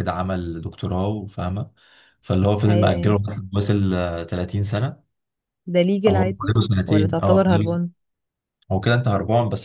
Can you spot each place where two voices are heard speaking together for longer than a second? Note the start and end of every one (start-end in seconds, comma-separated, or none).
6.1-7.8